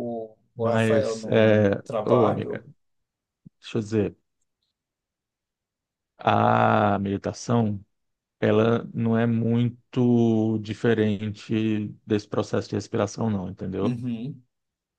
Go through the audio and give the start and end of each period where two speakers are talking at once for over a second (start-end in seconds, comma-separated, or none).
0.6-2.6